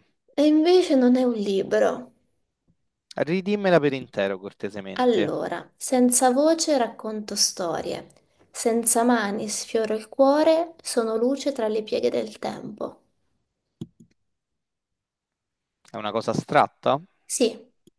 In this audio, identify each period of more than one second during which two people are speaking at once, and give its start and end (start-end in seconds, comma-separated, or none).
none